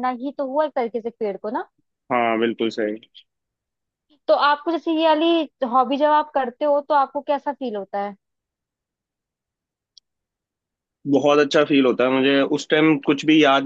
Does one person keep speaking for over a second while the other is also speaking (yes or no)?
no